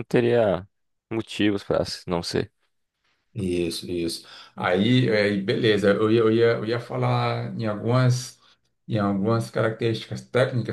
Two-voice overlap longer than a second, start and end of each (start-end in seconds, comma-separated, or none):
none